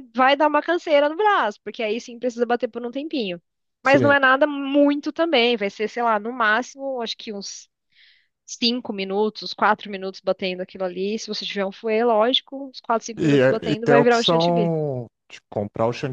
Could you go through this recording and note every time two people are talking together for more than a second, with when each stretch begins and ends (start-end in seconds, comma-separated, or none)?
13.2-14.7